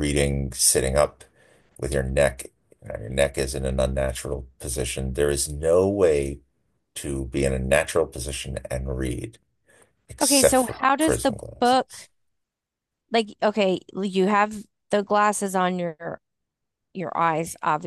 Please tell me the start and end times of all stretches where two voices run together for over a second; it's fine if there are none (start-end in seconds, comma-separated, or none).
10.2-12.1